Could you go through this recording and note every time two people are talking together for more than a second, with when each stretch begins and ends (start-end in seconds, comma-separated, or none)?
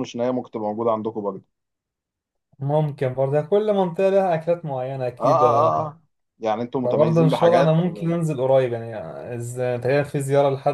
6.8-8.2